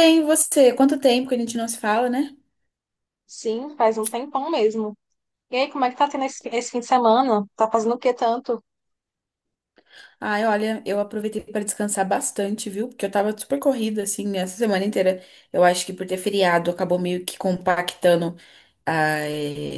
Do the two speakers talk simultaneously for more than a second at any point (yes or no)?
no